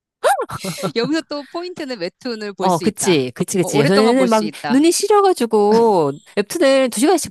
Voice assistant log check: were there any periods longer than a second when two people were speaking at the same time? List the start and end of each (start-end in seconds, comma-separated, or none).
2.6-4.9